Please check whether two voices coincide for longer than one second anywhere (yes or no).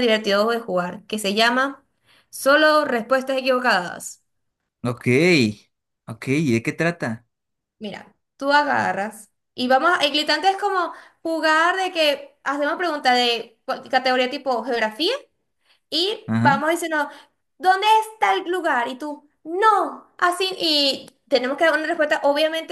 no